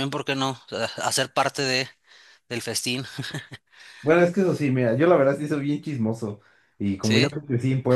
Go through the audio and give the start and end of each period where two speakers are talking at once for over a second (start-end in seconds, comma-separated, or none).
none